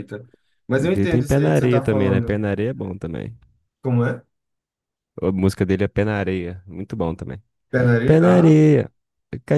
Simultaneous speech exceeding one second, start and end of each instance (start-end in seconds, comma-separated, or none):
0.7-2.4